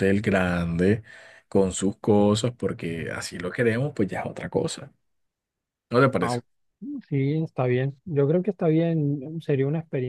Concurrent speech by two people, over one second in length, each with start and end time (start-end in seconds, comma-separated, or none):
none